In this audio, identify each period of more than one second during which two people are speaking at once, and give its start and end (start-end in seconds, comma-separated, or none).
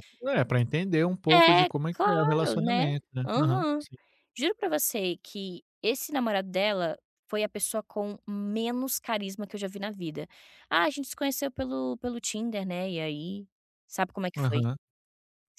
1.3-3.8